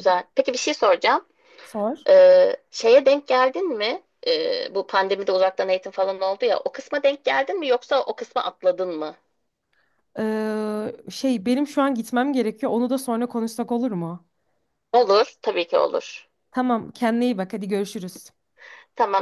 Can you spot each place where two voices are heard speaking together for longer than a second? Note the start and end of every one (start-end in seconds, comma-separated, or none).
none